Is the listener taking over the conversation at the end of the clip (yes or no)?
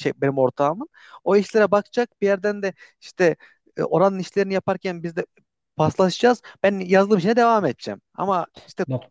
no